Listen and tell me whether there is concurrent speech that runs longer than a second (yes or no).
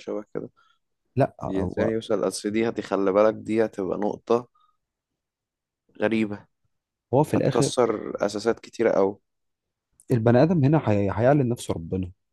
no